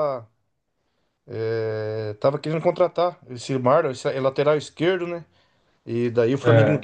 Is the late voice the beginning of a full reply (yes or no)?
no